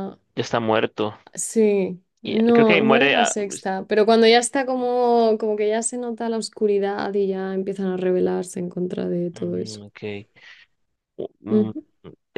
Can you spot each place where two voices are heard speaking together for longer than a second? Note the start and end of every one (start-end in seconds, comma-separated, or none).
2.2-3.7